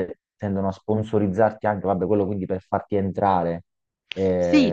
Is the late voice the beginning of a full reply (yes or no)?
yes